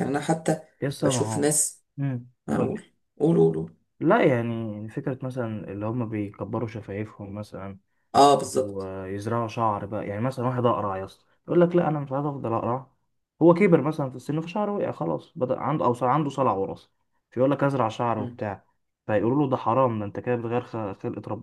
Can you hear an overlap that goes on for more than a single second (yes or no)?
no